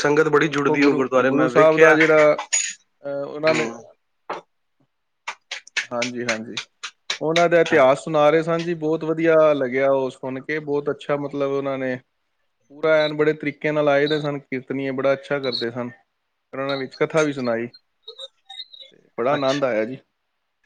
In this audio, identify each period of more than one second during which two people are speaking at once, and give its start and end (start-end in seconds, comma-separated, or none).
0.6-2.0